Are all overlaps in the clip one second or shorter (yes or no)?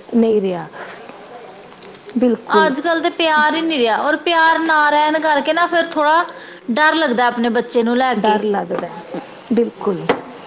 yes